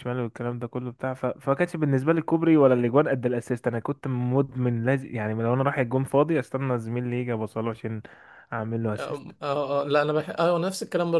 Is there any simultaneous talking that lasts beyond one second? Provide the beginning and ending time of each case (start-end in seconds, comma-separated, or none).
none